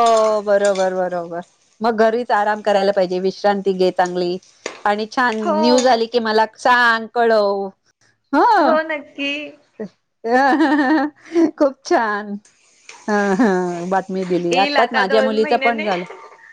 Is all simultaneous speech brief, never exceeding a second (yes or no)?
no